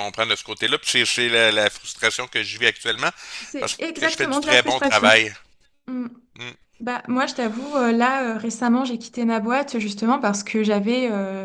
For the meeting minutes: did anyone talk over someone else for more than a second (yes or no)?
yes